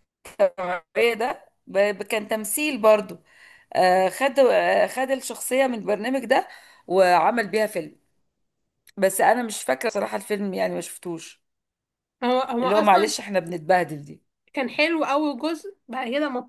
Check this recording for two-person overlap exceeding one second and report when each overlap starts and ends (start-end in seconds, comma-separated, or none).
none